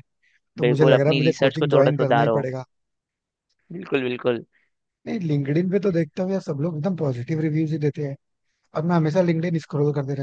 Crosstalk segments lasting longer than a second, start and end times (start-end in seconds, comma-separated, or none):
0.6-2.4